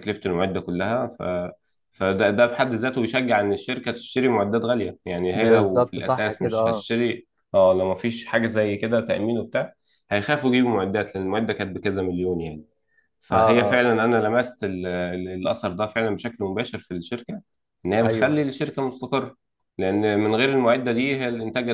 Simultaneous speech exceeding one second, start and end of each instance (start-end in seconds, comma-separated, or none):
5.3-6.8